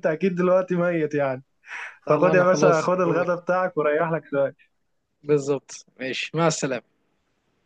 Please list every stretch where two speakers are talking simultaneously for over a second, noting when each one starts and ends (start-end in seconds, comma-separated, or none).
2.1-3.3